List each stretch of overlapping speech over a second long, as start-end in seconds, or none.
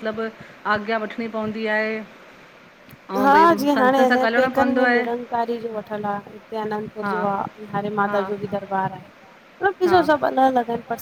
3.2-5.1